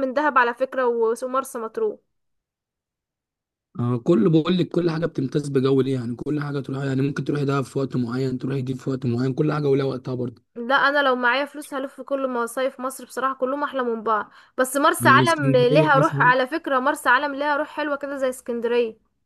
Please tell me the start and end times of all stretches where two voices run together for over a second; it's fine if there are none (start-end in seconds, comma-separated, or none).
15.0-16.3